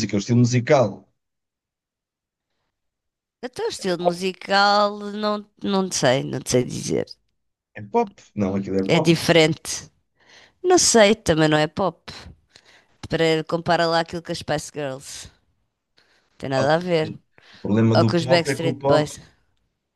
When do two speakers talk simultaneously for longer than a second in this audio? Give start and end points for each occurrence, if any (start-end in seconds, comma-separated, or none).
18.0-19.2